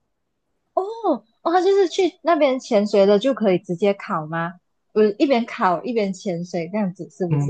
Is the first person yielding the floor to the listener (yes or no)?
yes